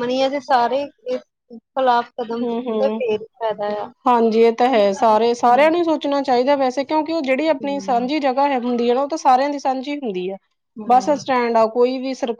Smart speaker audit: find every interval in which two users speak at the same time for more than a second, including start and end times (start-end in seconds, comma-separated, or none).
none